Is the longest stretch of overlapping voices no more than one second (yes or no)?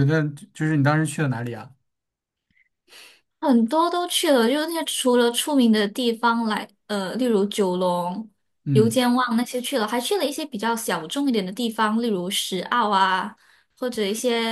yes